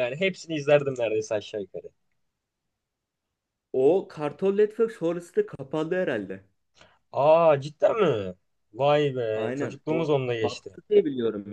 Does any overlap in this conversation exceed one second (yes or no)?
yes